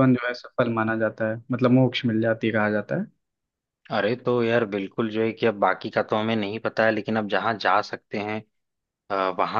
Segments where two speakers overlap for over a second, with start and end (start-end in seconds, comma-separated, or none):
none